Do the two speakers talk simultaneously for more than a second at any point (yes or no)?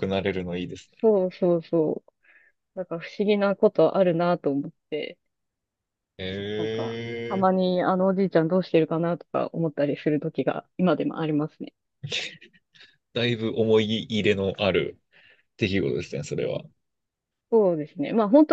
no